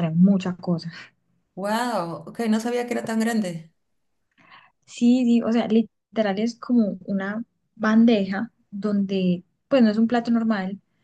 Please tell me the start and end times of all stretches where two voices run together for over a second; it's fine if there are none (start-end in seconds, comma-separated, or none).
none